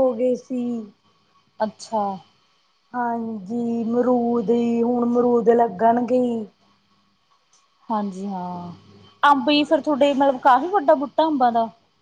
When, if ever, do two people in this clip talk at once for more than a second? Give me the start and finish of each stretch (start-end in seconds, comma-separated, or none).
none